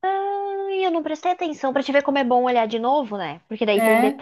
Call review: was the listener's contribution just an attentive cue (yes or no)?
yes